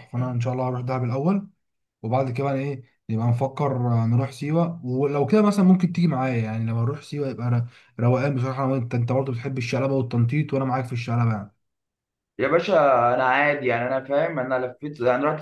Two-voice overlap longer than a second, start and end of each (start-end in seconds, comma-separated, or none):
none